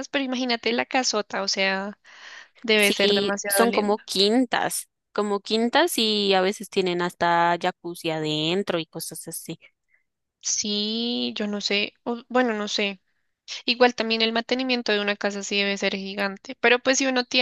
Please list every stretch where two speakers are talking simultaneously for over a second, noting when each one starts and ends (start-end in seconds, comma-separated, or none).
2.7-4.1